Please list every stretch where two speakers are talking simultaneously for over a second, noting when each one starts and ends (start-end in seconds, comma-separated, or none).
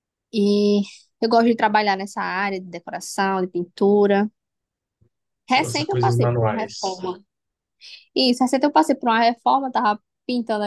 5.5-7.0